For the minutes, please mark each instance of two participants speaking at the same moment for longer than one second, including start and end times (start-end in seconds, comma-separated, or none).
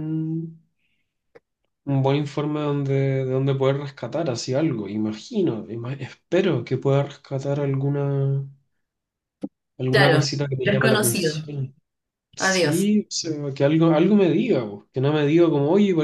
9.9-11.5